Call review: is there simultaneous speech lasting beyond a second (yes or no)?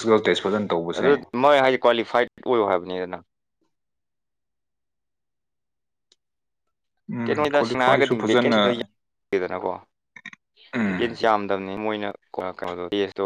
yes